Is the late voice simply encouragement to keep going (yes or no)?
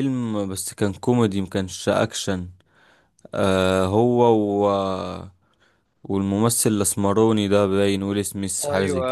no